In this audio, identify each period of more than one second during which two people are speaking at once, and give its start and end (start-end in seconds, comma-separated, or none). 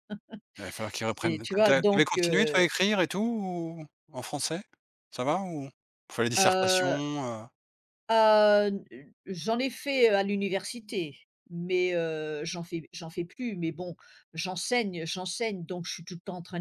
1.0-2.6